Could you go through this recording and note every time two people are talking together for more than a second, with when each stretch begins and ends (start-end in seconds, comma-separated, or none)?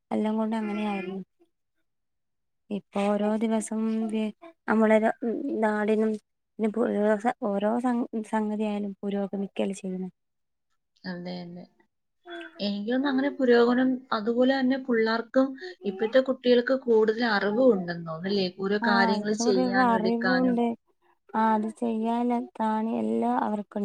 18.9-20.6